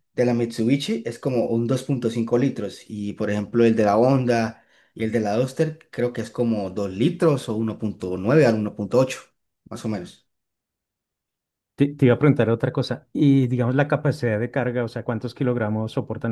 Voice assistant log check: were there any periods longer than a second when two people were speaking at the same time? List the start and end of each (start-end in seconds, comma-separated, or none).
none